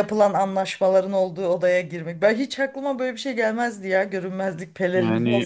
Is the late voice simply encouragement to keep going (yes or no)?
no